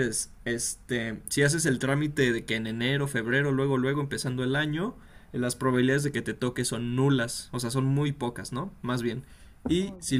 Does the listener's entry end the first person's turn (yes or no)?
no